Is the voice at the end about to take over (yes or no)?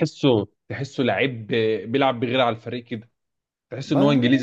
no